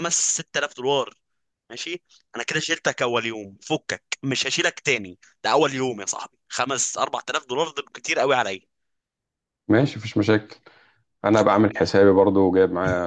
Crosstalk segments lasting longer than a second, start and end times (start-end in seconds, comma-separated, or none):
none